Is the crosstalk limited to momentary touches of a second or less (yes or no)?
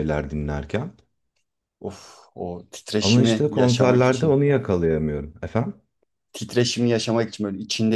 no